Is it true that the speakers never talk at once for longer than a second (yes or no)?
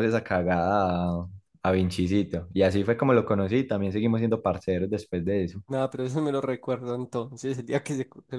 yes